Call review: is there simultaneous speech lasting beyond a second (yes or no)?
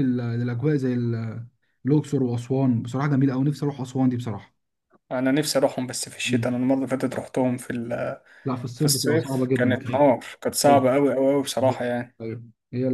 yes